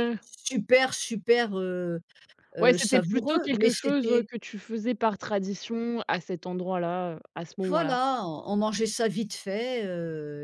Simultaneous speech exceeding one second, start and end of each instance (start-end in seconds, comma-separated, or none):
2.6-4.3